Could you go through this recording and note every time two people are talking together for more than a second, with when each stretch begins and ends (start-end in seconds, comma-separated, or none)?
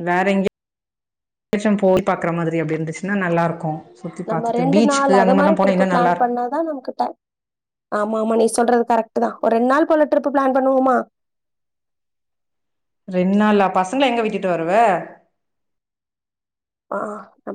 4.3-6.3